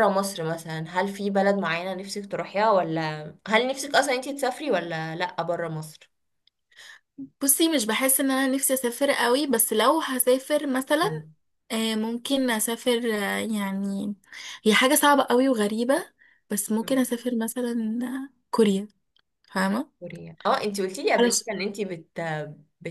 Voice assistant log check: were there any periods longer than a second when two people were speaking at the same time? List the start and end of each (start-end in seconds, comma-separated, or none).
none